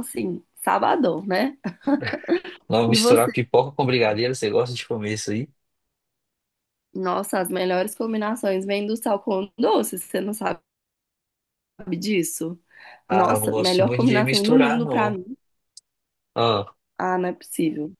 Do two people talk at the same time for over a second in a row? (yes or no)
yes